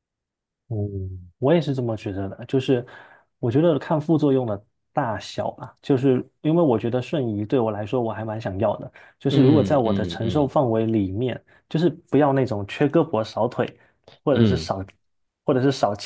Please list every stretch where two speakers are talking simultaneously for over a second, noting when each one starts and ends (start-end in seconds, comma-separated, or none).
9.3-10.5